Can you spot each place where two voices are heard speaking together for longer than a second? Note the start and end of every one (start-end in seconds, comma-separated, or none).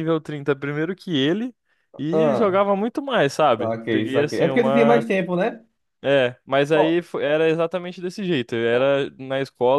3.6-5.0